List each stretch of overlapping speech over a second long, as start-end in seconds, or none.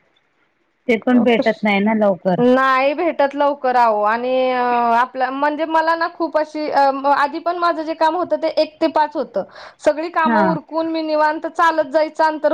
none